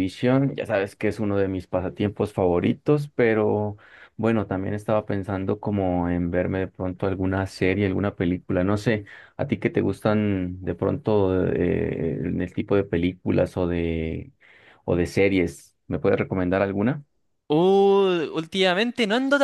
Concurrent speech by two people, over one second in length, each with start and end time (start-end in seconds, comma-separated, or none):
none